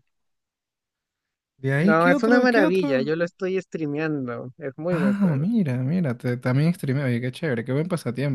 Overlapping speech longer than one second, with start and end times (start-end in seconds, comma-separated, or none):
1.8-3.1